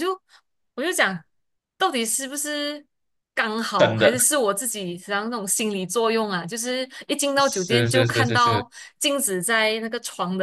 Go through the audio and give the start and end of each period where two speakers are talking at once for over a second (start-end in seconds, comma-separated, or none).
7.4-8.6